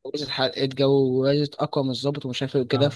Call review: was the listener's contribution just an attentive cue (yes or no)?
yes